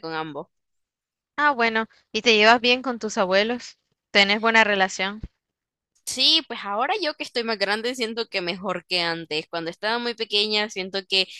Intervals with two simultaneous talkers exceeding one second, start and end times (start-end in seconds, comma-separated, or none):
none